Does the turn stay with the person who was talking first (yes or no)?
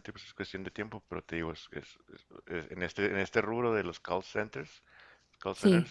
yes